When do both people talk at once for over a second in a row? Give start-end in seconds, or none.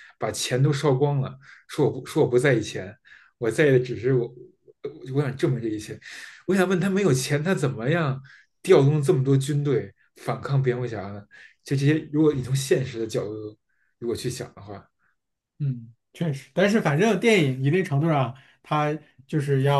none